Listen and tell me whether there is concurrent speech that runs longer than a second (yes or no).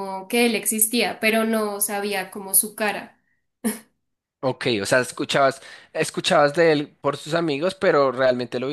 no